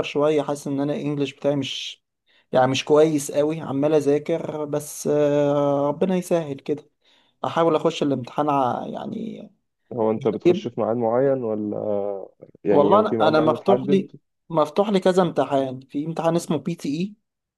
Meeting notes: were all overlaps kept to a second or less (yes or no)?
no